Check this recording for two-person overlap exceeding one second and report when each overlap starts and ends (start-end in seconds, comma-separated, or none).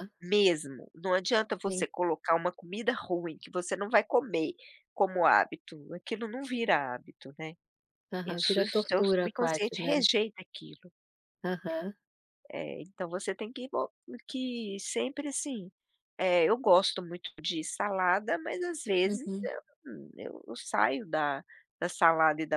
8.2-10.1